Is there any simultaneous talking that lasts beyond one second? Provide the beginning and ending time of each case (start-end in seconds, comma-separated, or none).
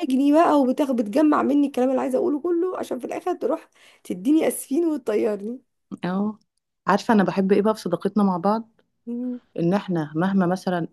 none